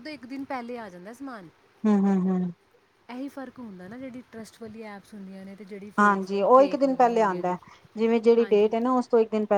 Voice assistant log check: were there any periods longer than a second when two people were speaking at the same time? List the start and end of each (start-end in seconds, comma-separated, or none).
6.0-7.5